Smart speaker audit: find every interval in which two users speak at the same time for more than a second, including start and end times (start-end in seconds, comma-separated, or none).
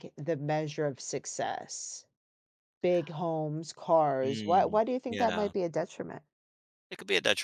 4.2-5.5